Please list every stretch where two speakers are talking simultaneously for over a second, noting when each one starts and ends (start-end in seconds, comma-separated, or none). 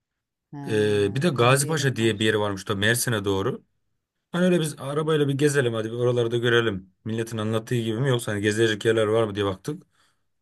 0.7-2.1